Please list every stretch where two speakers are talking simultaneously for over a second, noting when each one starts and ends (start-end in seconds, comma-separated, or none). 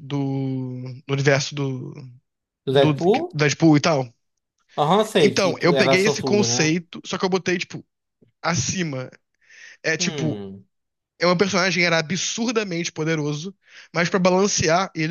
5.2-6.8